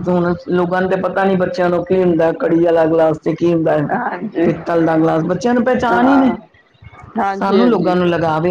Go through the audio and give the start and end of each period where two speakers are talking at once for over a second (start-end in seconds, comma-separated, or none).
none